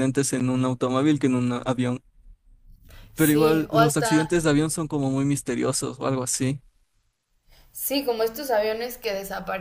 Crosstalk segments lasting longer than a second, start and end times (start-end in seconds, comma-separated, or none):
3.1-4.5